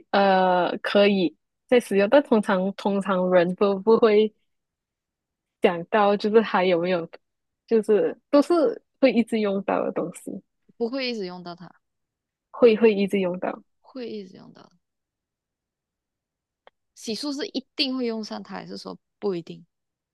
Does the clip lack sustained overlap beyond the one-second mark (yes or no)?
yes